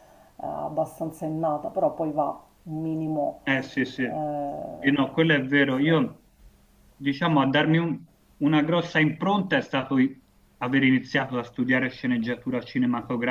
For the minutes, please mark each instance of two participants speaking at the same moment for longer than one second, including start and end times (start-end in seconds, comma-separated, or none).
none